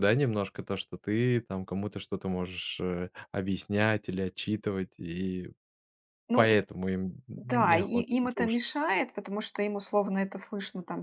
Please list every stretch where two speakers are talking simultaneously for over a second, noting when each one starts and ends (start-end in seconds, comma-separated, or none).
7.4-8.6